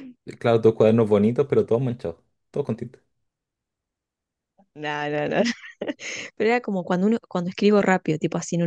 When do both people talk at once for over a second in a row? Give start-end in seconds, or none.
none